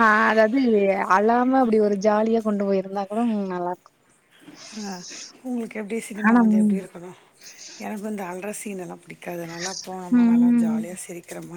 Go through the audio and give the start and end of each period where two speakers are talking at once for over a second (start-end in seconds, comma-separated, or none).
none